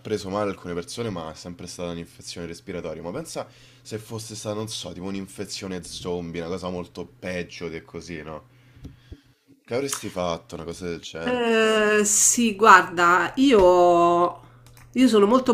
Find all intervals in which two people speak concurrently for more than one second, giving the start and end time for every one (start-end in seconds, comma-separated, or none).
none